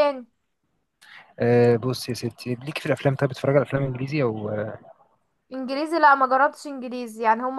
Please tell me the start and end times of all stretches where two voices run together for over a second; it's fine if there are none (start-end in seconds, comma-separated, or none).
none